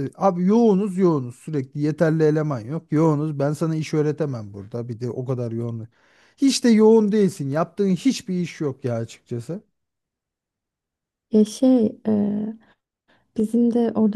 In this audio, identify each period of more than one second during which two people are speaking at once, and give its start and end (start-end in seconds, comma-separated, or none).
none